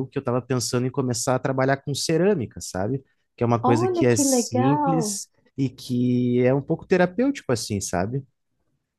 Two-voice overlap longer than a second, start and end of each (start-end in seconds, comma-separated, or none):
3.6-5.2